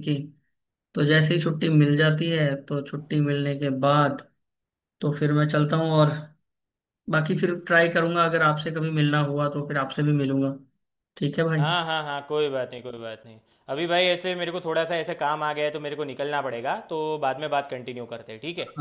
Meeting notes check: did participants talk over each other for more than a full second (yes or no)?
no